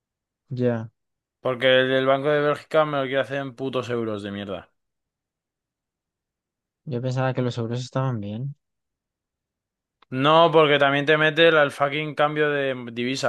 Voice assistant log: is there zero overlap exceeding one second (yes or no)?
yes